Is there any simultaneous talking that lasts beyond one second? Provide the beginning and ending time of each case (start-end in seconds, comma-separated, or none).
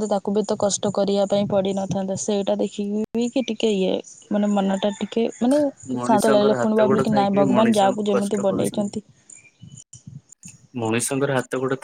6.1-8.9